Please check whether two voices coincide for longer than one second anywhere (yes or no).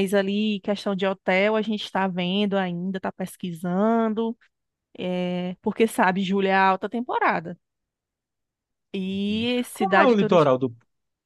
yes